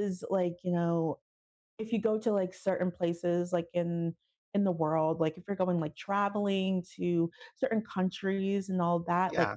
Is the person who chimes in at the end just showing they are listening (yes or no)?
yes